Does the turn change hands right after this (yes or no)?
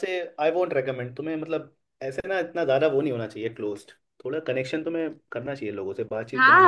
yes